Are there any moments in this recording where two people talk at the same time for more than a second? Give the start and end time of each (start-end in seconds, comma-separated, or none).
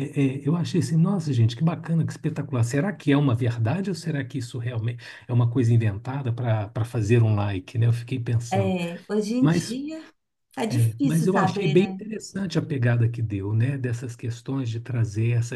10.7-12.0